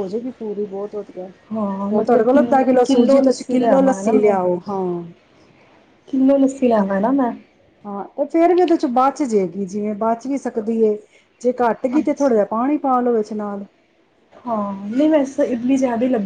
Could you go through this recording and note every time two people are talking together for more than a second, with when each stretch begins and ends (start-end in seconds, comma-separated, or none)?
1.9-4.0